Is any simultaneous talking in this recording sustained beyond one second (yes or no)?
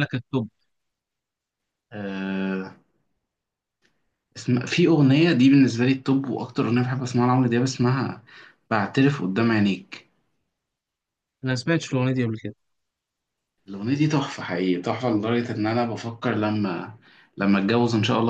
no